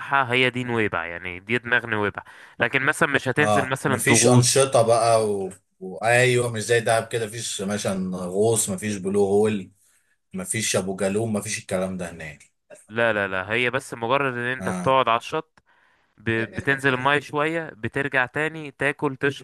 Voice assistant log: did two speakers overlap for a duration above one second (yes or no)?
yes